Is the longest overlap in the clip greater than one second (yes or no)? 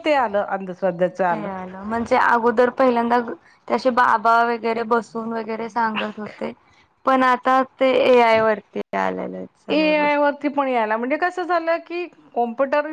no